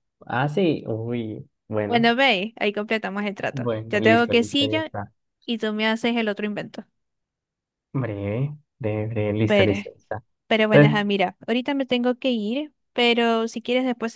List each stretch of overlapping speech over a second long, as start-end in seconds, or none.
3.5-4.8